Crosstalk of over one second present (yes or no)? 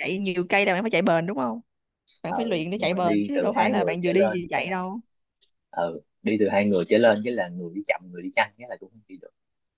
yes